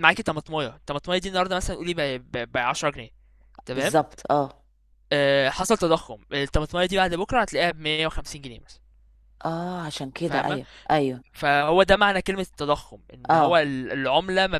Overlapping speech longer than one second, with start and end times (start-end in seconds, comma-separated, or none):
none